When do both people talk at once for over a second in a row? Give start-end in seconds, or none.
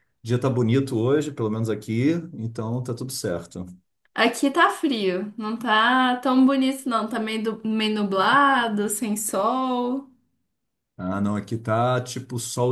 none